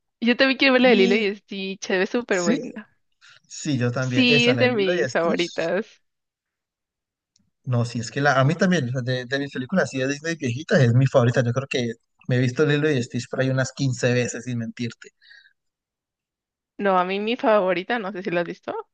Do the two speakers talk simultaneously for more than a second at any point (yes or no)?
yes